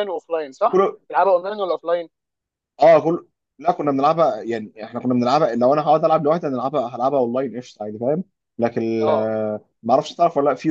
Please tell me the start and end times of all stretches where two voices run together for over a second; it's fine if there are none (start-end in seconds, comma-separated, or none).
none